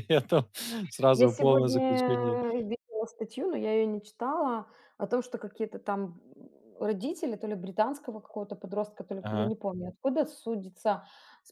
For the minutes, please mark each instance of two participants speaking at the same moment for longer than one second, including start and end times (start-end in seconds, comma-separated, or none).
1.1-2.4